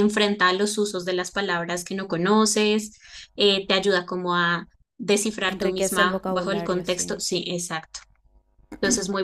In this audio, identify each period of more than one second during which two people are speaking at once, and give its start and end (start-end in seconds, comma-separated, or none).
5.5-7.2